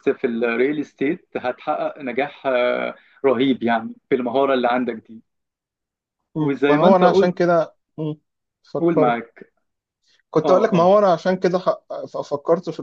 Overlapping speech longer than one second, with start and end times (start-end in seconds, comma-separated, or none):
6.3-7.5